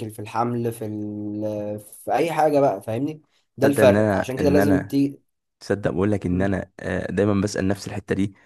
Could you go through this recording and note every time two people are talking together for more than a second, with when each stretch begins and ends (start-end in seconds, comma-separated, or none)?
3.6-5.0